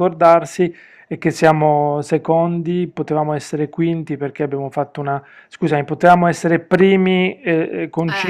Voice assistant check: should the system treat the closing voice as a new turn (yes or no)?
no